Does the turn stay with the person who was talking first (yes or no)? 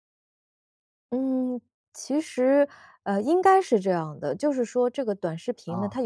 yes